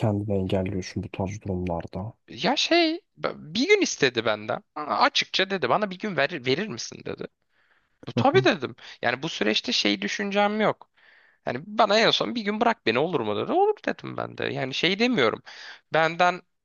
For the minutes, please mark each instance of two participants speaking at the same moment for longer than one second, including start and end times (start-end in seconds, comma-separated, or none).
none